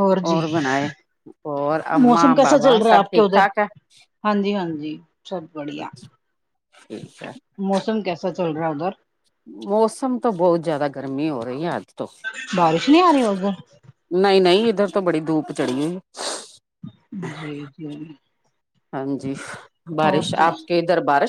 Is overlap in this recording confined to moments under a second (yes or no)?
no